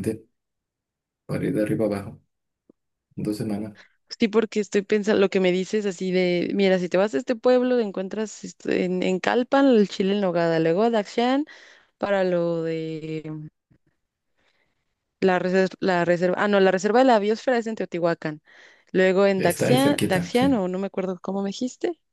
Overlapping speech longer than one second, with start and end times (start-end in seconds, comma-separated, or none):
19.4-20.6